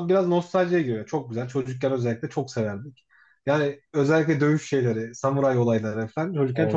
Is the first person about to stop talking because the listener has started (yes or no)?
no